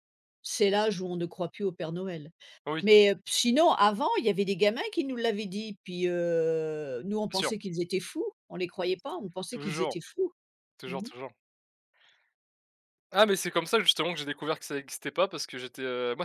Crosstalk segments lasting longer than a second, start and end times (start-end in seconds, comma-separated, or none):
none